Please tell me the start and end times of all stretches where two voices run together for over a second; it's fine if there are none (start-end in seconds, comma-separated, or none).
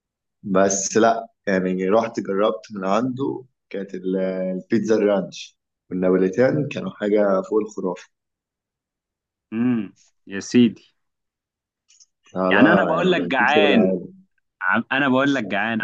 12.5-13.9